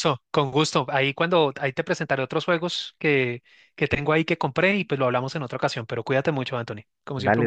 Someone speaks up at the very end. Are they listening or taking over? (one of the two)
taking over